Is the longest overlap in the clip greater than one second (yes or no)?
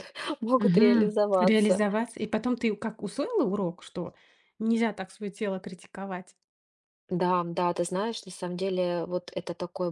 yes